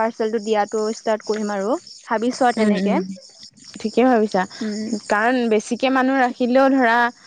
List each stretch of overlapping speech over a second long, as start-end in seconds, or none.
none